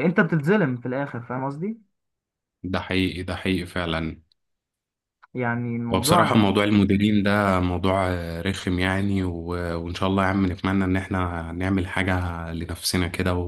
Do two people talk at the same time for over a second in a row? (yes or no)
no